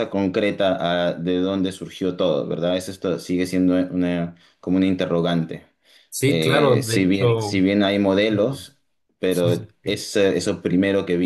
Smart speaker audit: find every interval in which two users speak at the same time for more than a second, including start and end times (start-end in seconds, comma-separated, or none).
6.2-7.7